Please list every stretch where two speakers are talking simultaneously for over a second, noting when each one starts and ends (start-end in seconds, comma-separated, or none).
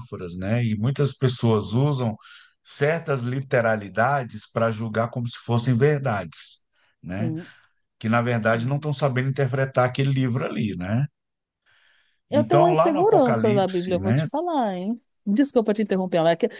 12.3-14.3